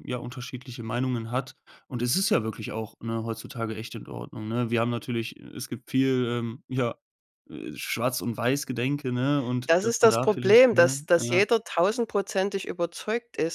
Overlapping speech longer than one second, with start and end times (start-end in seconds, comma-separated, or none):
9.7-11.4